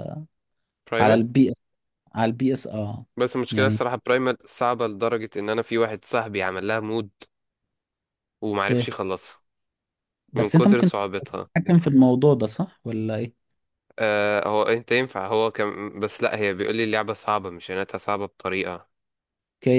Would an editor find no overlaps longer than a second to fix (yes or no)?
yes